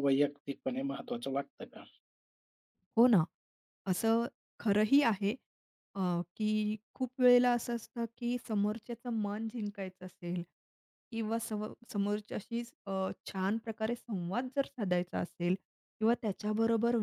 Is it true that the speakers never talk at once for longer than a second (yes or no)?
yes